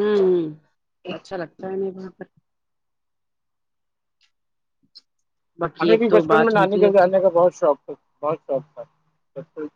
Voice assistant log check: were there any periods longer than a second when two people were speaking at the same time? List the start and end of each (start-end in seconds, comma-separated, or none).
5.8-7.1